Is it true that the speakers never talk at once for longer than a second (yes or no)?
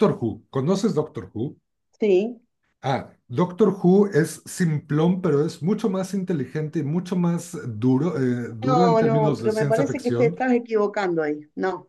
no